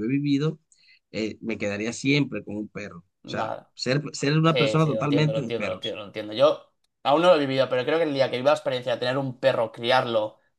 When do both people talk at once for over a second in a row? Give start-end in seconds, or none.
4.4-6.0